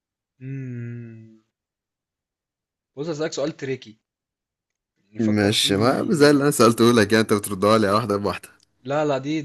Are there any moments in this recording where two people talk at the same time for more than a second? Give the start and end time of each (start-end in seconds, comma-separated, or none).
5.2-6.5